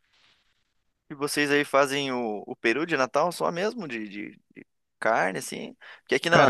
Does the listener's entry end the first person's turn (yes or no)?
no